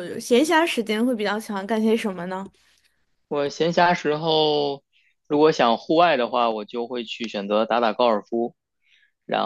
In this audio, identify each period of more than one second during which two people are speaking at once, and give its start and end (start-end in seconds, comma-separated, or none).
none